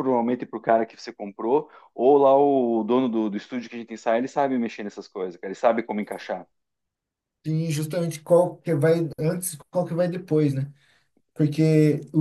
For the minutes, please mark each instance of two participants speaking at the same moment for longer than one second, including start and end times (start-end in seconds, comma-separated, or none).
none